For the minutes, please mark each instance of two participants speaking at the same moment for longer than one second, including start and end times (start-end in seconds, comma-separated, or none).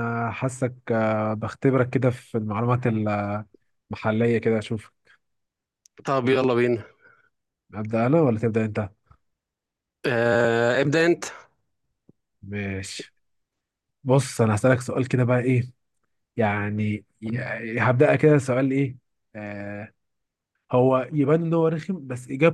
none